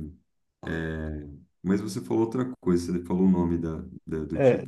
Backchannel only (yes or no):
no